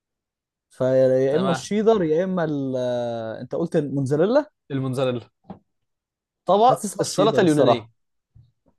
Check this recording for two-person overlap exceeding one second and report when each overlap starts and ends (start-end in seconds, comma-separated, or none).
6.6-7.9